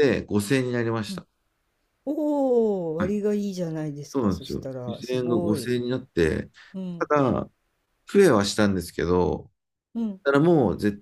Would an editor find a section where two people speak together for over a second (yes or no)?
yes